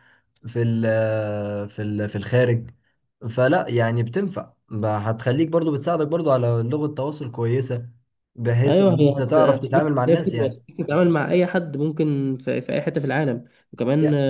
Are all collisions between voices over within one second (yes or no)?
no